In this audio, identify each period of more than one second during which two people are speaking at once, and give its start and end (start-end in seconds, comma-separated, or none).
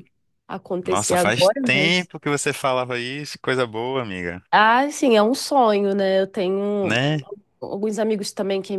0.8-2.1